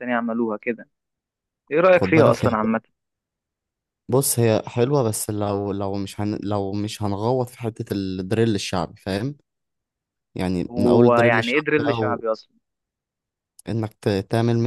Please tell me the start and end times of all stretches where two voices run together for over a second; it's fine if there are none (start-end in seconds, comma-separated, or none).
10.7-12.2